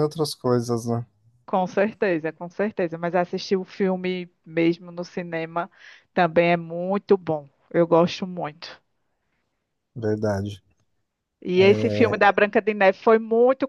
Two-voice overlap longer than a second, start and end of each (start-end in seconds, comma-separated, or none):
none